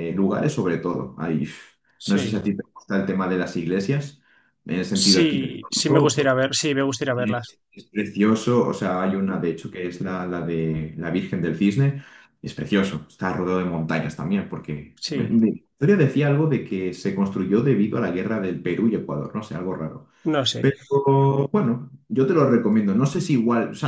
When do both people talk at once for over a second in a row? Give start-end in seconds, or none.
4.9-6.3